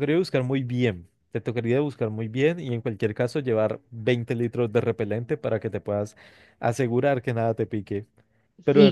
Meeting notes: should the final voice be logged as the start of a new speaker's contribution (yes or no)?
no